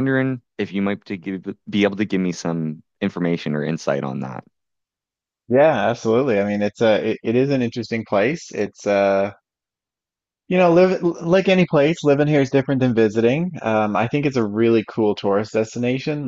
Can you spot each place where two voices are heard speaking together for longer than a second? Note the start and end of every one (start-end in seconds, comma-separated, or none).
none